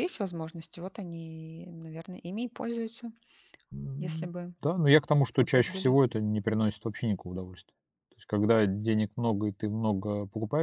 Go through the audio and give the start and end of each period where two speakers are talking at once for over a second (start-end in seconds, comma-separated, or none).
none